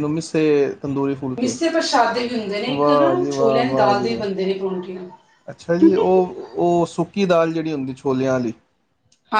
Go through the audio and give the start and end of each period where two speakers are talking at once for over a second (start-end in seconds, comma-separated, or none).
2.8-4.3